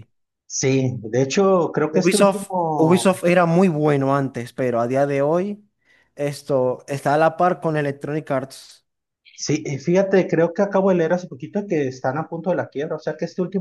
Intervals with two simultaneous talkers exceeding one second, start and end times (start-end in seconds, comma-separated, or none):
1.9-3.2